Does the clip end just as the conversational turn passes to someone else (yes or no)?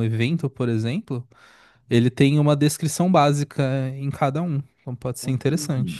yes